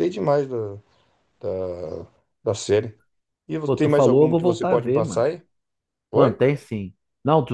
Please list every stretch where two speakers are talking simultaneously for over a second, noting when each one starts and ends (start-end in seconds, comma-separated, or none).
3.6-5.2